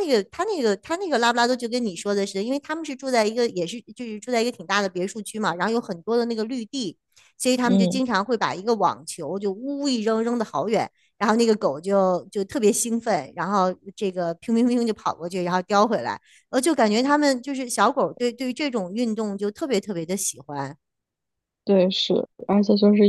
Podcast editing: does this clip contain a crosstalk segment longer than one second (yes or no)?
no